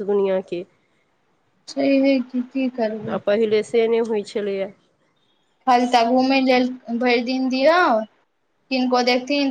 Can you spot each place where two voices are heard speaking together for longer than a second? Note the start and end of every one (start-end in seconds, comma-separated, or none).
none